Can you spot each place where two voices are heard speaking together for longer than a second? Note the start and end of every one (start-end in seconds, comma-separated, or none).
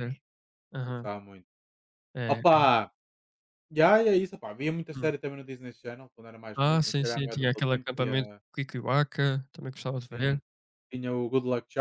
6.5-8.4